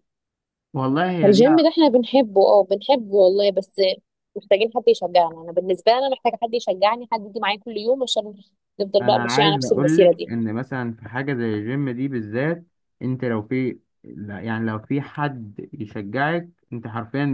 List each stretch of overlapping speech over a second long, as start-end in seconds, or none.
9.0-10.3